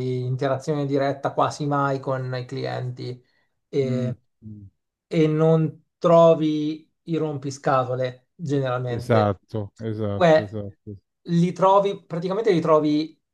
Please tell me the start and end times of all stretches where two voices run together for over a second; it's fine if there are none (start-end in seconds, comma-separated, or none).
none